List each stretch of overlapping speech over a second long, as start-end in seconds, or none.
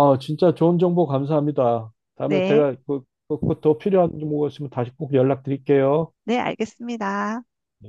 none